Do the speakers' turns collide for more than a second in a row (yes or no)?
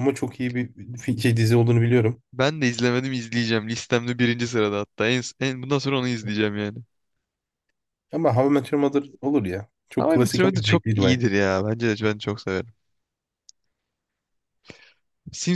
yes